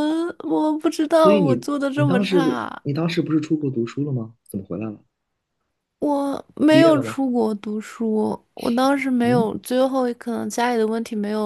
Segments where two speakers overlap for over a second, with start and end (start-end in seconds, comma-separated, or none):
1.1-2.8